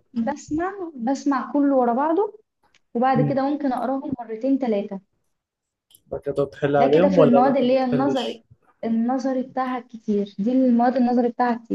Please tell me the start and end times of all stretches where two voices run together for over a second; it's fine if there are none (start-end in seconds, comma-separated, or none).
6.8-8.4